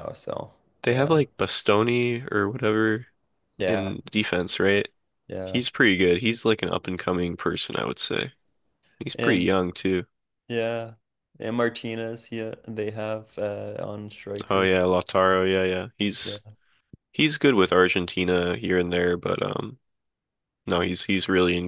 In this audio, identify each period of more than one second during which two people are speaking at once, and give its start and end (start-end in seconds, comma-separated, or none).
none